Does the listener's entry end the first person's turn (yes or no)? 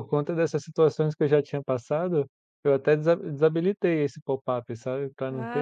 yes